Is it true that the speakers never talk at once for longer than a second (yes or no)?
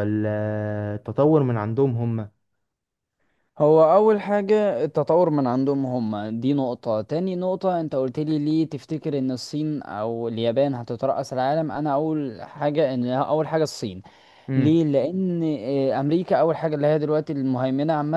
yes